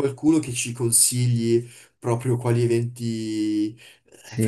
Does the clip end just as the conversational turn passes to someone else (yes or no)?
yes